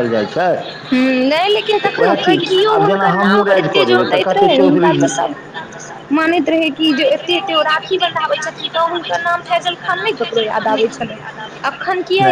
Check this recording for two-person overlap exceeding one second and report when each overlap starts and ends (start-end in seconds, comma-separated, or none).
2.9-5.1